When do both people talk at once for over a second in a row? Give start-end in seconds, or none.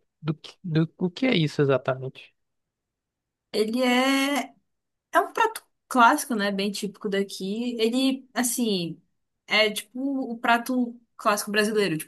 none